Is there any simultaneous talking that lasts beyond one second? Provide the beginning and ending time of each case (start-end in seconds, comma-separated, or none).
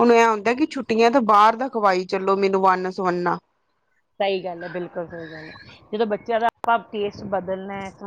none